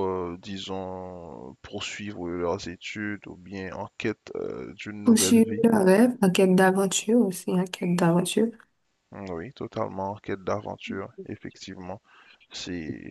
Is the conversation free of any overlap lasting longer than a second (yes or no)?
yes